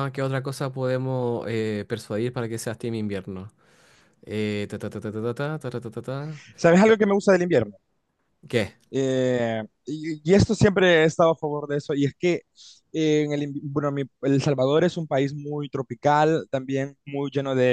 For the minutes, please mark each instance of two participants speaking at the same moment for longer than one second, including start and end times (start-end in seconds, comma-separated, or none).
none